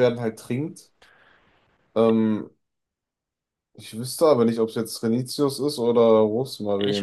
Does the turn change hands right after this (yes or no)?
yes